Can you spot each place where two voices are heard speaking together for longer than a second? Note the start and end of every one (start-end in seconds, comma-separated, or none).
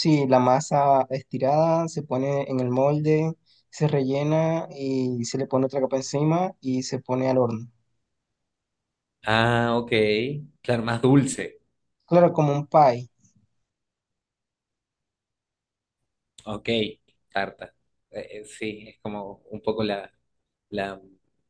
none